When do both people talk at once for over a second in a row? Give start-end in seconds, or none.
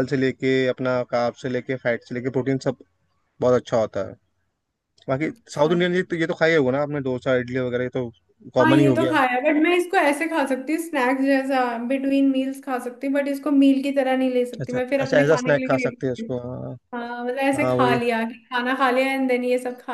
14.6-16.3